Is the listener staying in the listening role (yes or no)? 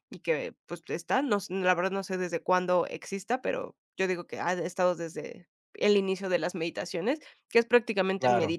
yes